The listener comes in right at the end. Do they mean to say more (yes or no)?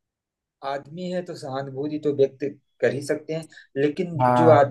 no